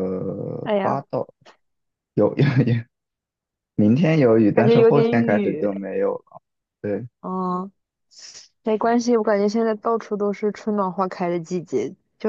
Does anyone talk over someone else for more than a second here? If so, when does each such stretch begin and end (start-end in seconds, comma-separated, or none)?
4.5-5.9